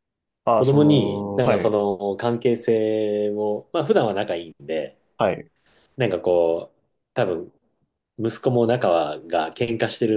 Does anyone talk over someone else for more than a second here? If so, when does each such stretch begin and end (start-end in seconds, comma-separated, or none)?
0.5-1.8